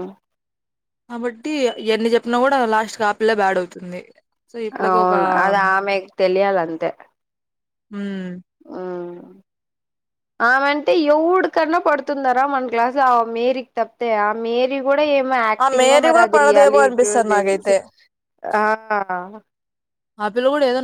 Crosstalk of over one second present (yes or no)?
yes